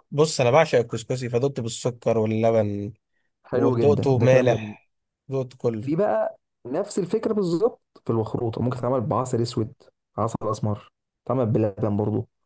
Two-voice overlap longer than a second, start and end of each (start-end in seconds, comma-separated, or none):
3.5-4.7